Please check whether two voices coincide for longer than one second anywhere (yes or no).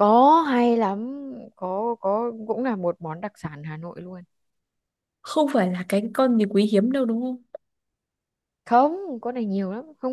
no